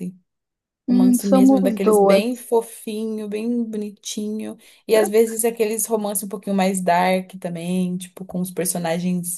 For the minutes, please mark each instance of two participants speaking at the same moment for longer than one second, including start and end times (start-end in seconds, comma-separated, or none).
0.9-2.5